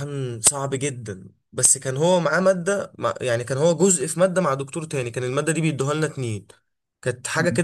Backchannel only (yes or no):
yes